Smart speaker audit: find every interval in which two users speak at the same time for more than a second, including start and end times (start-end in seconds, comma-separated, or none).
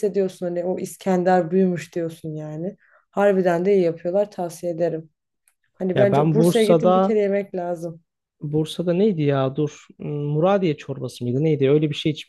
5.9-7.1